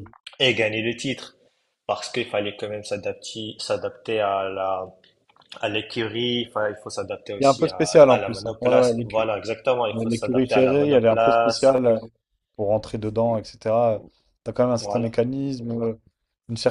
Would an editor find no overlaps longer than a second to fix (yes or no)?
no